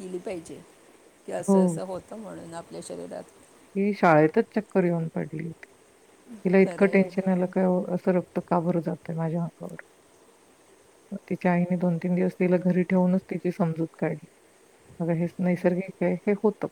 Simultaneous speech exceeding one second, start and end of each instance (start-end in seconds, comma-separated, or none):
none